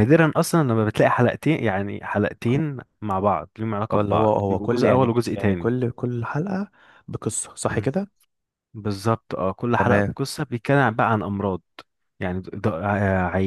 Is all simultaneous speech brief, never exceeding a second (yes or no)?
no